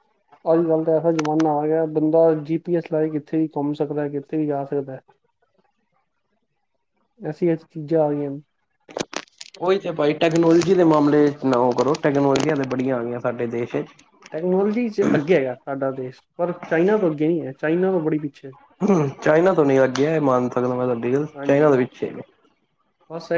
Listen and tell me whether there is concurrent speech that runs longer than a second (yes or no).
no